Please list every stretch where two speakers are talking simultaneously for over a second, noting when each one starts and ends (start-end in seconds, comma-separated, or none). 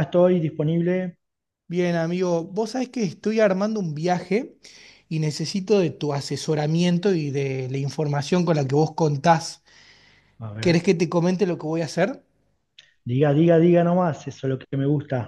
none